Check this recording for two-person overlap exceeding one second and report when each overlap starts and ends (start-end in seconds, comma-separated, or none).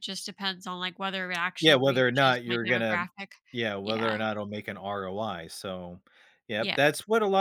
1.6-3.0